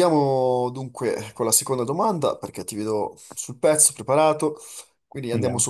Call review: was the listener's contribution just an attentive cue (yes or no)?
yes